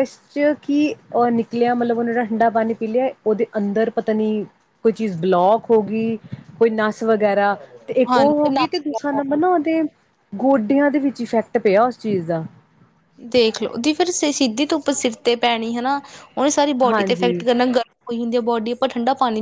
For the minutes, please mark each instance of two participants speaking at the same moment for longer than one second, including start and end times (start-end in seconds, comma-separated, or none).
8.1-9.4